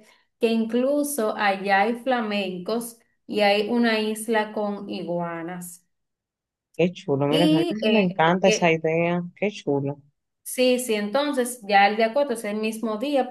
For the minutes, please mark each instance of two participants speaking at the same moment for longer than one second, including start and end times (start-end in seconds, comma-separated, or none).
7.3-8.8